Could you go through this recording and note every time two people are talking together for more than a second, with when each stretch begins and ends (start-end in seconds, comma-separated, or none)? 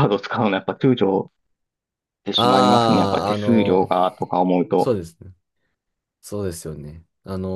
2.4-3.9